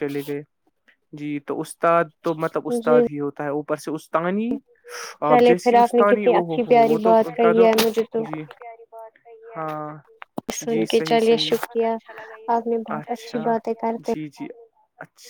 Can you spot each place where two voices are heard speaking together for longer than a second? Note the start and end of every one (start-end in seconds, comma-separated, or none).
5.3-7.7